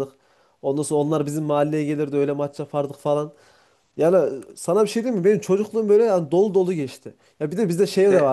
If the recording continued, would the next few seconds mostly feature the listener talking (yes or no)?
no